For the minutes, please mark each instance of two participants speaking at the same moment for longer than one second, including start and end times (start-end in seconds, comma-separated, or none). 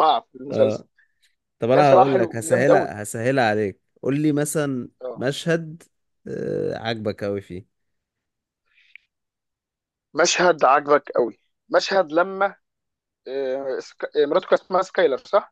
1.7-2.9